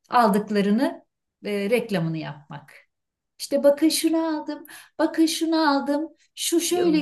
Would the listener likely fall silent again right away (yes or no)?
no